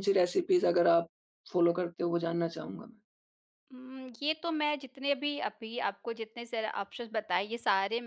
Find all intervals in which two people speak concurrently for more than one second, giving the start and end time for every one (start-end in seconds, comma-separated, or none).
none